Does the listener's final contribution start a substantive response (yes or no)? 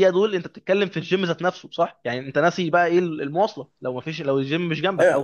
yes